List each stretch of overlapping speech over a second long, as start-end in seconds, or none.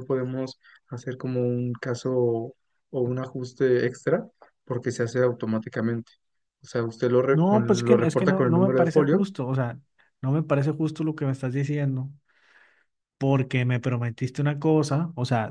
7.3-9.2